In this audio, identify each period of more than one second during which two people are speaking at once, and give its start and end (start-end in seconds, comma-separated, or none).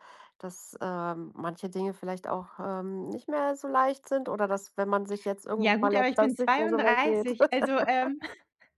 5.6-7.3